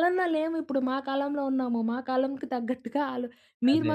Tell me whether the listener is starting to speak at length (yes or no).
no